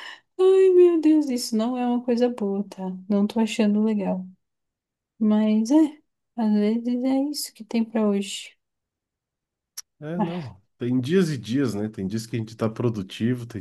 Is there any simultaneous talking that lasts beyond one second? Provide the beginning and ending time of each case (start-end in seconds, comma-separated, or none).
none